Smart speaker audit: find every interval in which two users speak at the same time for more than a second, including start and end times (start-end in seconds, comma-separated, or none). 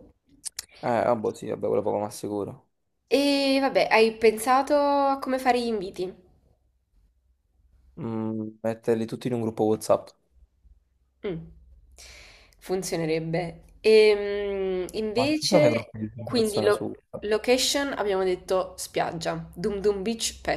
15.1-17.3